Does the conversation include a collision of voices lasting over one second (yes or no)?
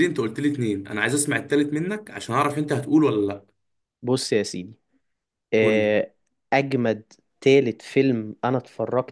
no